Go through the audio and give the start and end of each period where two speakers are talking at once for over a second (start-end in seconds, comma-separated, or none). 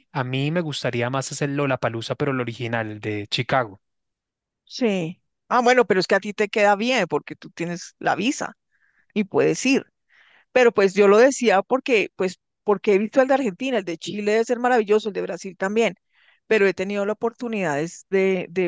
none